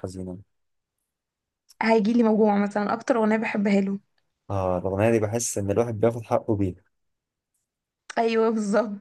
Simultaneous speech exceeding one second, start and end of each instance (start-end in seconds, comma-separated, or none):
none